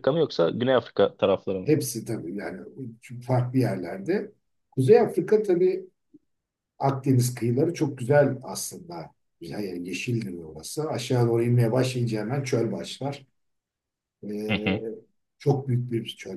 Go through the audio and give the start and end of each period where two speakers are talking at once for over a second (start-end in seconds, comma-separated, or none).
none